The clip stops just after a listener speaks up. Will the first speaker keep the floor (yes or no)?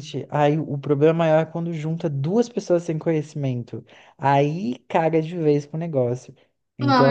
no